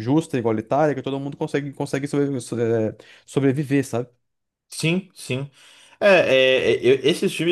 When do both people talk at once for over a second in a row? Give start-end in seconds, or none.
none